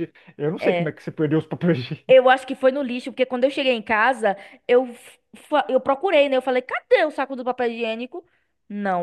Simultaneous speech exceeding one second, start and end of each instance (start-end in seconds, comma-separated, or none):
none